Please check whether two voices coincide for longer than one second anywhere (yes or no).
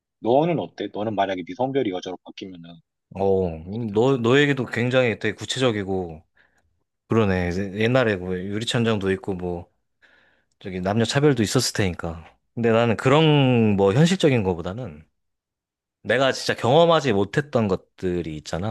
no